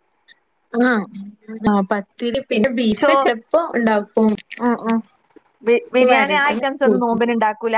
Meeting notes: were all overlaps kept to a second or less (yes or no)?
yes